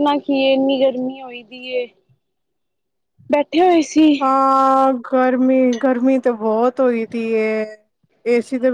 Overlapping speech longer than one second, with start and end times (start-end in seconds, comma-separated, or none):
none